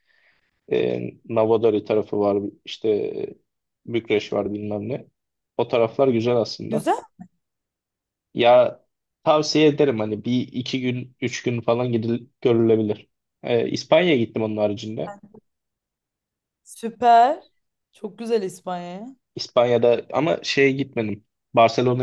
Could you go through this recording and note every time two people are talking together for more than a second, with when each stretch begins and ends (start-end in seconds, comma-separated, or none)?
none